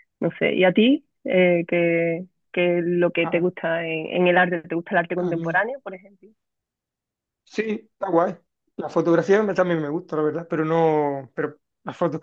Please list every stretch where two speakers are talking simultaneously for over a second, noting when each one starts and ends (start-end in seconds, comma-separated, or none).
none